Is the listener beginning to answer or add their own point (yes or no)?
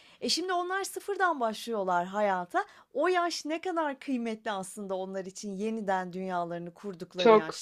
yes